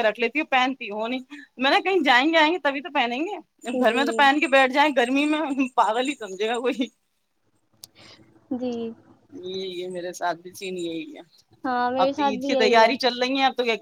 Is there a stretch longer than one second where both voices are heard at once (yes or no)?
yes